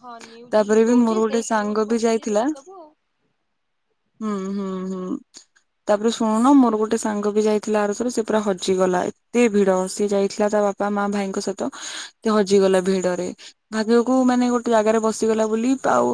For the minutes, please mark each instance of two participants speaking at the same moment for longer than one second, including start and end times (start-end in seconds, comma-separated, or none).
0.5-2.4